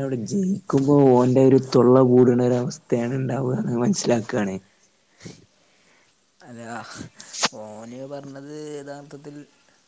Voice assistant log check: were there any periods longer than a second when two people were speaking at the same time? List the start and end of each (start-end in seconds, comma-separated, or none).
none